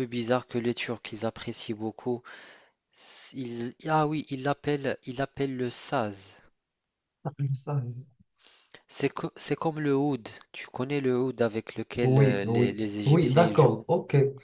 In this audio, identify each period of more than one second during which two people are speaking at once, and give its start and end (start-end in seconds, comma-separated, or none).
12.0-13.8